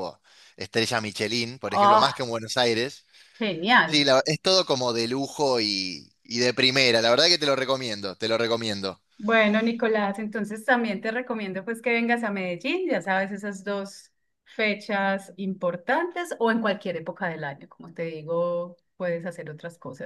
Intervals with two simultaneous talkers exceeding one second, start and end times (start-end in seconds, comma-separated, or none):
none